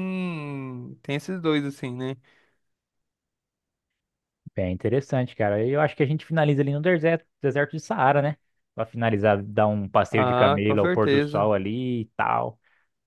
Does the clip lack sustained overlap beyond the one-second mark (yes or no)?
no